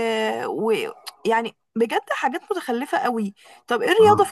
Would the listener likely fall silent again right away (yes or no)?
yes